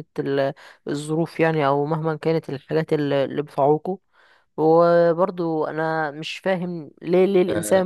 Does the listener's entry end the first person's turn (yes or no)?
no